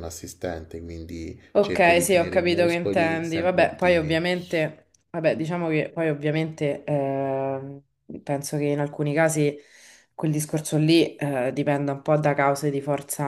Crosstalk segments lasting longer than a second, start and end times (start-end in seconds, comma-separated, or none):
1.5-4.2